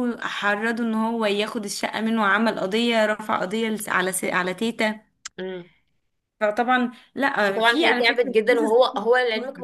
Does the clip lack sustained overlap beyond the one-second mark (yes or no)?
no